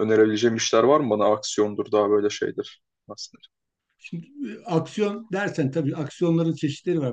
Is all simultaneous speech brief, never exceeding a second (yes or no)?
yes